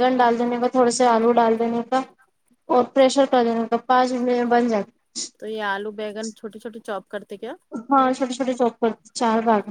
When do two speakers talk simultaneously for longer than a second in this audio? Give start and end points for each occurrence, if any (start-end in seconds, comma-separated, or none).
none